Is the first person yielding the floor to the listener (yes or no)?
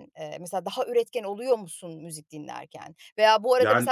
no